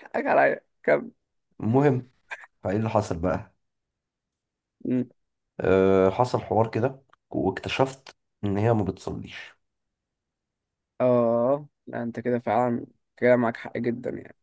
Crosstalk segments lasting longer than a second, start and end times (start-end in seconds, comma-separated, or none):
none